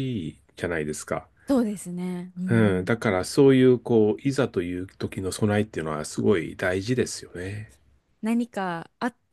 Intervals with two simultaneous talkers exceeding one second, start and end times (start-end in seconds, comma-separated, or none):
none